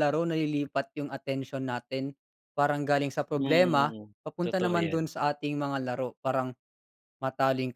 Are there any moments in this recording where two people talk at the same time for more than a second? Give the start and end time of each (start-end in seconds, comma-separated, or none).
3.4-5.1